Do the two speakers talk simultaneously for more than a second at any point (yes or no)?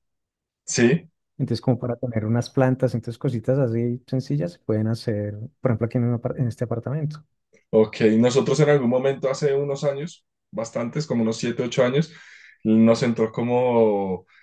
no